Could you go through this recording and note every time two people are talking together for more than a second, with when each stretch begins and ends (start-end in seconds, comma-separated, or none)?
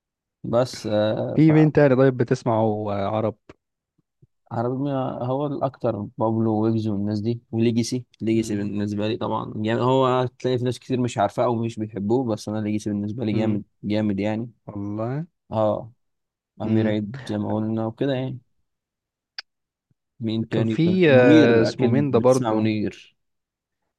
20.5-22.7